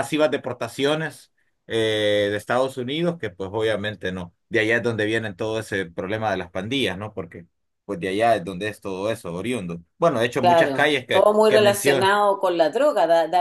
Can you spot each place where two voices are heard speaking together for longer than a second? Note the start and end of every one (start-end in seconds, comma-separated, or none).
10.4-12.1